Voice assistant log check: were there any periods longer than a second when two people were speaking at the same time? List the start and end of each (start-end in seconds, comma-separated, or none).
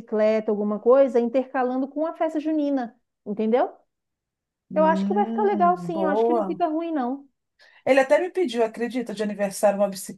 4.7-6.6